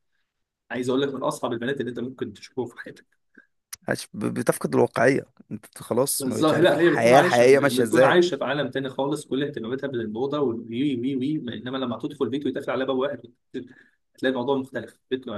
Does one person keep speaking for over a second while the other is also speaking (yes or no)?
yes